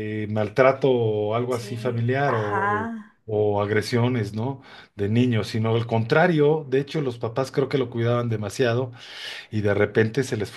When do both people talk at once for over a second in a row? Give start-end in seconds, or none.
1.5-2.9